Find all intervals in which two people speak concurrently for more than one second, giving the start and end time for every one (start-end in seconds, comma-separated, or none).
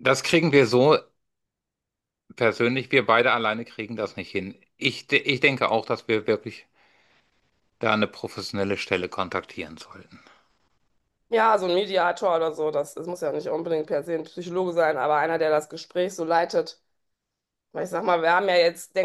none